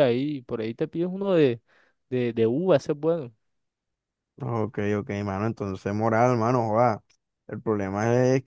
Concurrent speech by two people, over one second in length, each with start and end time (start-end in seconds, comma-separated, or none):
none